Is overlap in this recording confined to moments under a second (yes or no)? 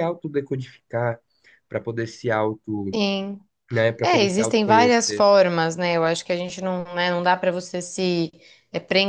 no